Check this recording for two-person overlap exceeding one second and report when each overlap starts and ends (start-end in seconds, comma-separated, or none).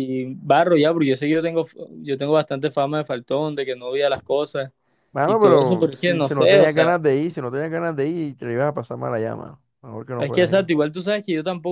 5.2-7.0